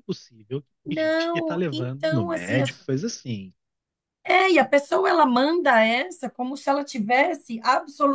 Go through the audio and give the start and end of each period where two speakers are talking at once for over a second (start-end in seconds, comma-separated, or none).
0.8-2.8